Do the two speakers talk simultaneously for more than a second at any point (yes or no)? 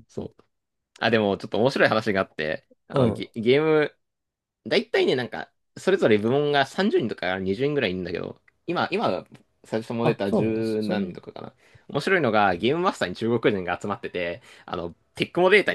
yes